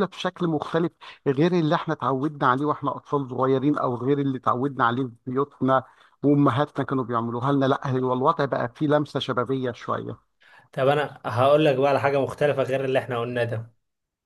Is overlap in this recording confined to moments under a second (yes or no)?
yes